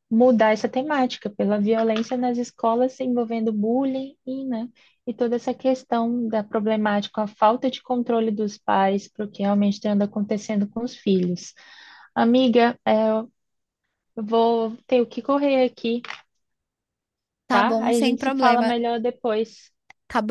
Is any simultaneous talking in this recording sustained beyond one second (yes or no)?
yes